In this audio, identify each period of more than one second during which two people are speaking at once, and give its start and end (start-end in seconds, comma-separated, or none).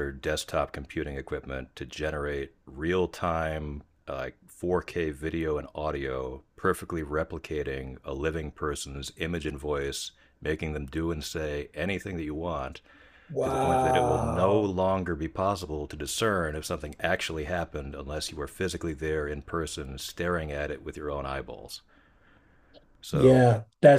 13.4-14.8